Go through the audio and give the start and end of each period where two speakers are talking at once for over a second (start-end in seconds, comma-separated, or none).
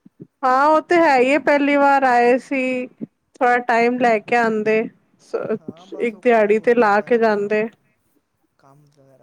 5.6-7.5